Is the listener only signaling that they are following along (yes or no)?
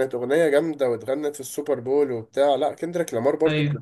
yes